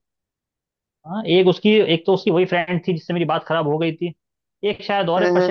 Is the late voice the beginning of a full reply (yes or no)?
no